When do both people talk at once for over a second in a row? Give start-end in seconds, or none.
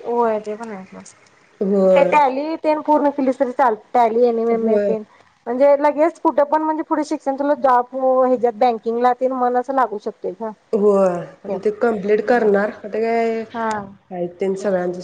none